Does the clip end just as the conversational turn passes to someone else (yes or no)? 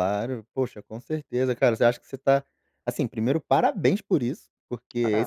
no